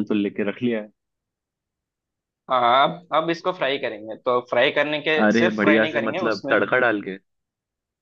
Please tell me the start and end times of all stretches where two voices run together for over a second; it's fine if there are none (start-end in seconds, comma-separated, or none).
5.2-6.6